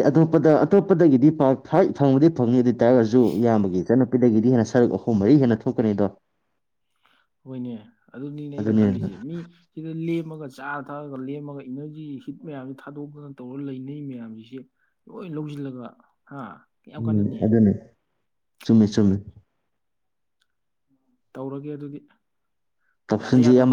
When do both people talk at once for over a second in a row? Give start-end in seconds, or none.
none